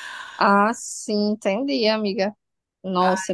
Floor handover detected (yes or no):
no